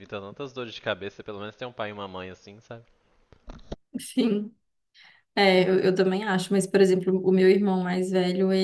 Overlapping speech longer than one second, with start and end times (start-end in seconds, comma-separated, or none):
none